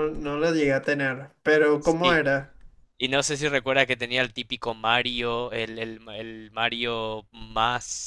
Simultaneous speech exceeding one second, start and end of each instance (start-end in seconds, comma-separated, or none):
none